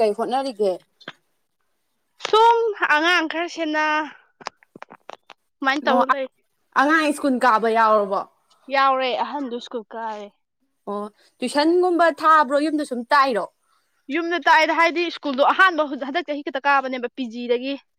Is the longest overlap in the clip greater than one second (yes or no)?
no